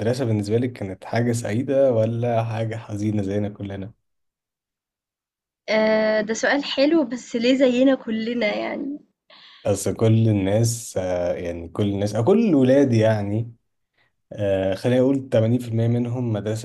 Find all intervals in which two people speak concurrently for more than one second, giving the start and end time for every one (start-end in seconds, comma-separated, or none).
none